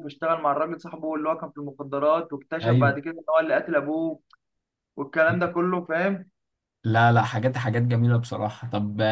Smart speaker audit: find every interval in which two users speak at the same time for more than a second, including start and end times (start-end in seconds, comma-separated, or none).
none